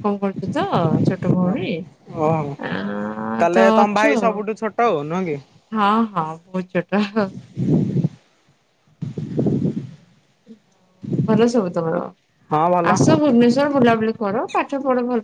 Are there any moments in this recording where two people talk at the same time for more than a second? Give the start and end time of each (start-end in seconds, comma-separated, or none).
2.7-4.4